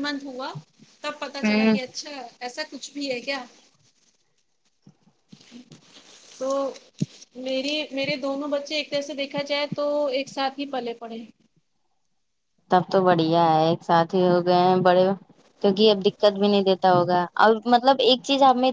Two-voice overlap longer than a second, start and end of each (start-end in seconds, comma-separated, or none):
none